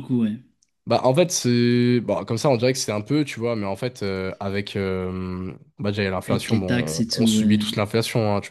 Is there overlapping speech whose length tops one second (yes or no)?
yes